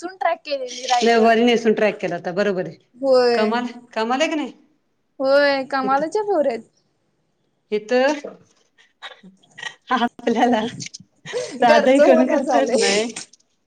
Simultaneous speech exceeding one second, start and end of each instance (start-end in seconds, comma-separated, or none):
11.7-13.0